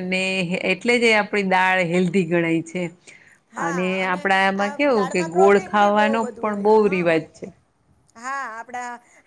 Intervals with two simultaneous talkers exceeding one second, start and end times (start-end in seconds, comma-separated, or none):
4.6-7.1